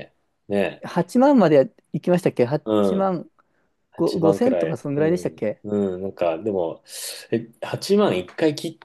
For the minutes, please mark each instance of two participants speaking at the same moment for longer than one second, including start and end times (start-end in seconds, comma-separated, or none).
4.0-5.6